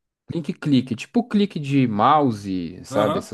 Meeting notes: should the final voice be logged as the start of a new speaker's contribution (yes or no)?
yes